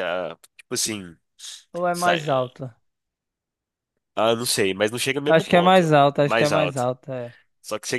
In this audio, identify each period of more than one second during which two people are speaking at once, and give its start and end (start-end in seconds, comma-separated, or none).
5.3-6.9